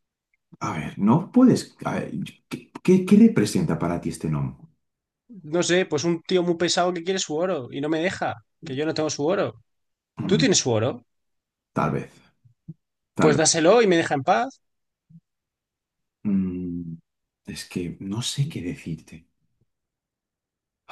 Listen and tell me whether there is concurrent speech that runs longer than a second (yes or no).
no